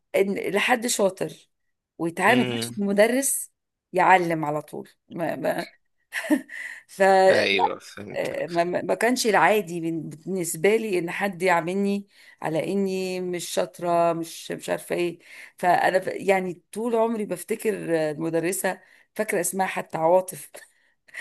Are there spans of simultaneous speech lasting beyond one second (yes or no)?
no